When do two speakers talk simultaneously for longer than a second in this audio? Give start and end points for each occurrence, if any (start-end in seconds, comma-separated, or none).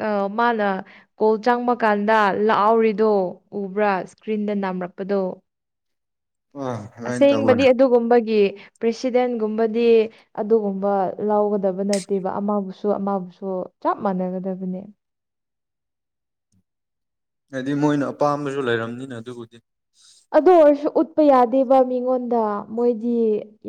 none